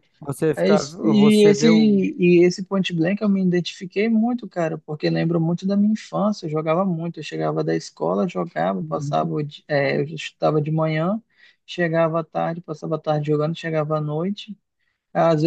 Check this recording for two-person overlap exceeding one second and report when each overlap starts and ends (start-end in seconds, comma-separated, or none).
0.5-2.0